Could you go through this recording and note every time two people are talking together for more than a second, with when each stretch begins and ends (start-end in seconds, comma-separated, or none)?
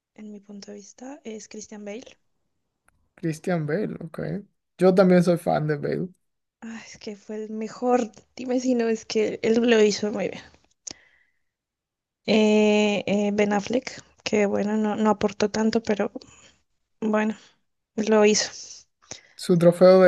none